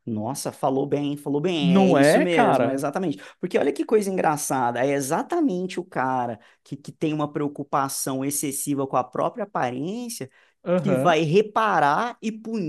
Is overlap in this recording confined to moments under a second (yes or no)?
no